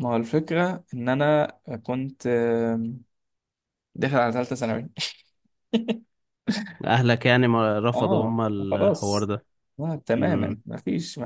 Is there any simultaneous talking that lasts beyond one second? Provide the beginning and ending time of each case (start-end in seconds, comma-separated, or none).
7.9-9.3